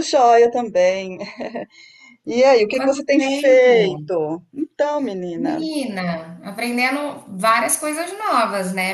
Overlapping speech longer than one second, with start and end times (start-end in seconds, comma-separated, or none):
2.7-4.0